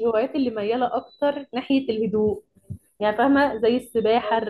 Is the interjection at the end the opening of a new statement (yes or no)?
no